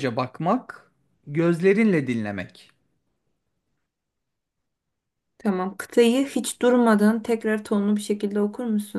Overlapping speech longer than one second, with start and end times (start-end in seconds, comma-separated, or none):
none